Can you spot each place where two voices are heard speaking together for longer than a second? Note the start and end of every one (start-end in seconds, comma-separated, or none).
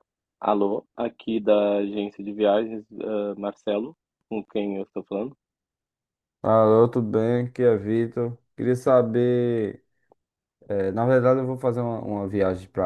none